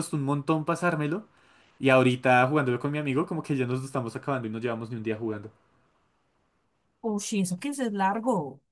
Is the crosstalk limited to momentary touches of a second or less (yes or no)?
yes